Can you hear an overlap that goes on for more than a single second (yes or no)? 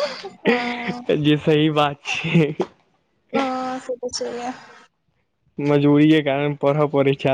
no